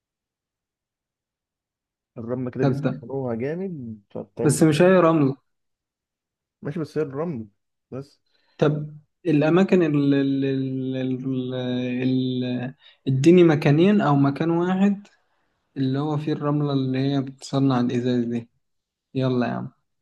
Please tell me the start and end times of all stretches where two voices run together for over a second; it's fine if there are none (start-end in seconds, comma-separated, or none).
none